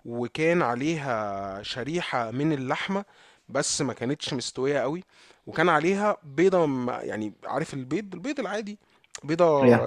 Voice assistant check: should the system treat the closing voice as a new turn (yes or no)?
no